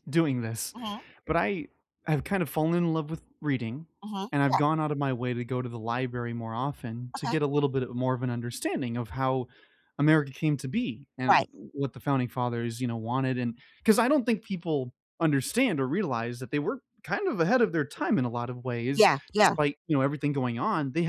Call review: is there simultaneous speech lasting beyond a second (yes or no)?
no